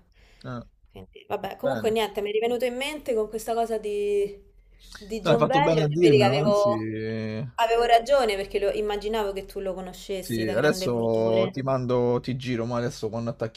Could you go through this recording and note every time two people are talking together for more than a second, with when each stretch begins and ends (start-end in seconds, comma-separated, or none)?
5.2-6.7, 10.2-11.6